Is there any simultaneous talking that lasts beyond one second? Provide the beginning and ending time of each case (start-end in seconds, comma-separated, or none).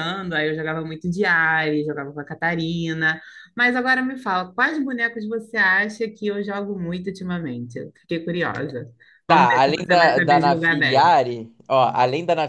9.3-11.1